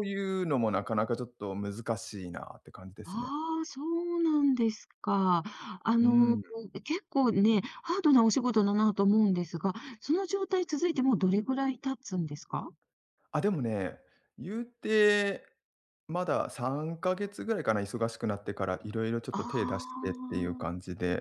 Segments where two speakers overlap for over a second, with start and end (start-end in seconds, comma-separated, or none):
19.3-20.7